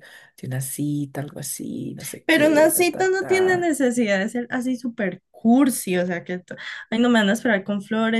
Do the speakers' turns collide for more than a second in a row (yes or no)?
yes